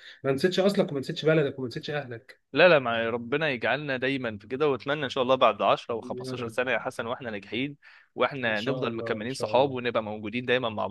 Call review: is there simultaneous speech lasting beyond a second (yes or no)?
yes